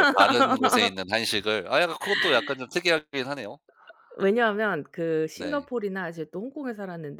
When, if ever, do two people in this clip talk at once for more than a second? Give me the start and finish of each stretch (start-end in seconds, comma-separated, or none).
none